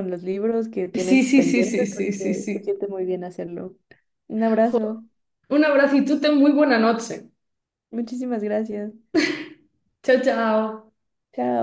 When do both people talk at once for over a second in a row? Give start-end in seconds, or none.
0.9-2.7